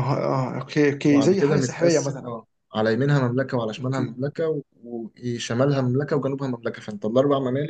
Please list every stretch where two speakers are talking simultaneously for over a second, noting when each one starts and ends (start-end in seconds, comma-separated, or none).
1.1-2.3